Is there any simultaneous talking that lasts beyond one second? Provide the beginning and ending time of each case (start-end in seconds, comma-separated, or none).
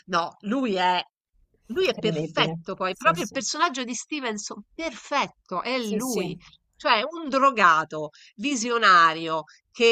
1.8-3.3